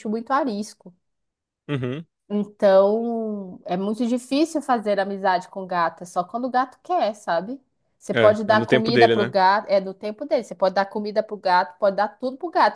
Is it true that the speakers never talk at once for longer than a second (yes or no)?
no